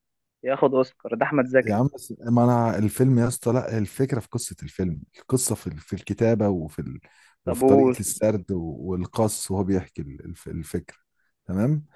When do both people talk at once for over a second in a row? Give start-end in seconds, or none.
none